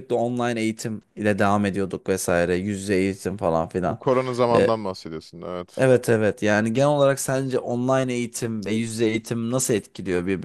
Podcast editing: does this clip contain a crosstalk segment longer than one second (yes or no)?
no